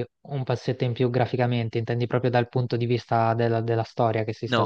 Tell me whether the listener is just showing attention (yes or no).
no